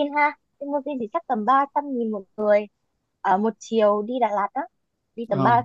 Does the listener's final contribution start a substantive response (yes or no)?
yes